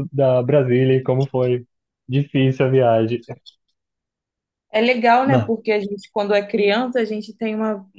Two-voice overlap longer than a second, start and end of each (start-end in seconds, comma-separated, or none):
none